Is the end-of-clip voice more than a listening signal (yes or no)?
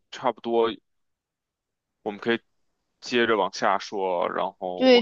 yes